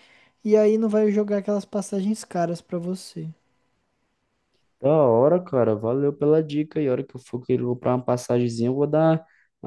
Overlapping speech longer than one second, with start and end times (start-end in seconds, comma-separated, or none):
none